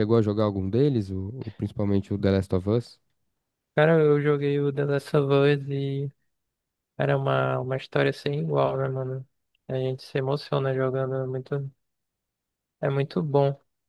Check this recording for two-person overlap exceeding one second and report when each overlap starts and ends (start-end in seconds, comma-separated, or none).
none